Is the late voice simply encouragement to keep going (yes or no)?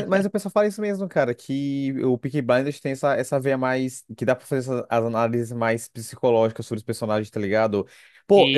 yes